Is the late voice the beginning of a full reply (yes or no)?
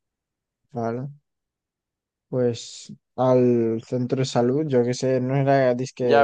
yes